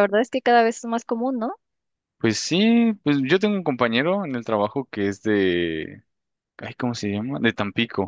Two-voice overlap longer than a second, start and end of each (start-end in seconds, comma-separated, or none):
none